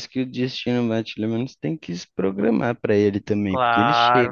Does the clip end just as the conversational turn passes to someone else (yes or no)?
yes